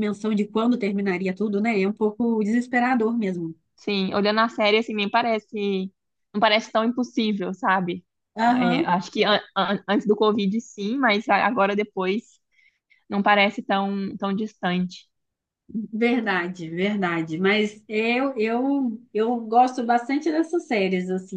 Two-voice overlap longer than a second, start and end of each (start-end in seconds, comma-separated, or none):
none